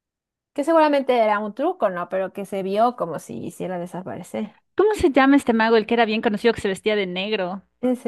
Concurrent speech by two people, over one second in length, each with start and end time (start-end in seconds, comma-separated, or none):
none